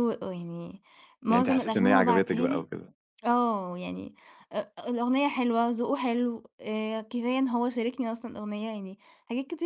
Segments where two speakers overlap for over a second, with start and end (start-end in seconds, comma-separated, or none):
1.3-2.7